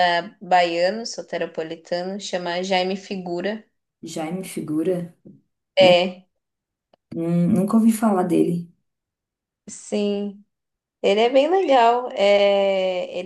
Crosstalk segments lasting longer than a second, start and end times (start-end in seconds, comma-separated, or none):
none